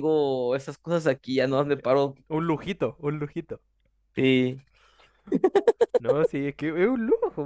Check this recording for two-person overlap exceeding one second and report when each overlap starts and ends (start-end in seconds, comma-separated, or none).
none